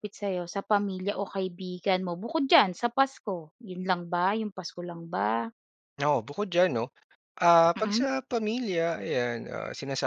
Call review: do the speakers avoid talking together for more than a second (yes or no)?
yes